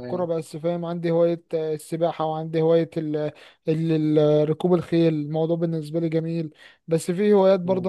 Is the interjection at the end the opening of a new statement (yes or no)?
no